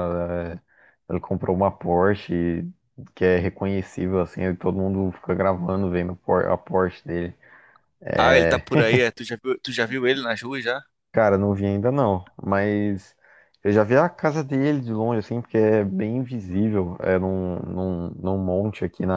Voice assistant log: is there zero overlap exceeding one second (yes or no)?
yes